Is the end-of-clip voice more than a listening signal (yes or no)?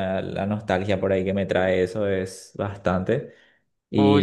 yes